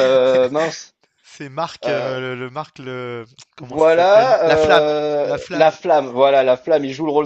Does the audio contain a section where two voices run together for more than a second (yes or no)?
yes